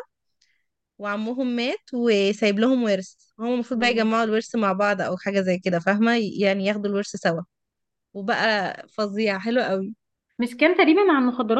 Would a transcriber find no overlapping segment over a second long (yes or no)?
yes